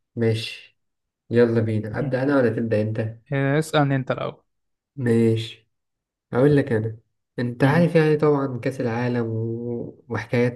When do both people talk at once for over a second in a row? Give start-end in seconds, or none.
none